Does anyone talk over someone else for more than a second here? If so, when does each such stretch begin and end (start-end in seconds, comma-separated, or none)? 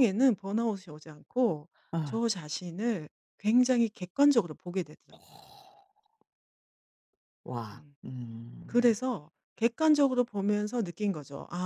none